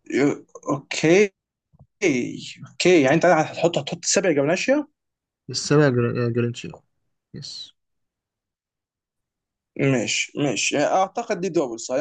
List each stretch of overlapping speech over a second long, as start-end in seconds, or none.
none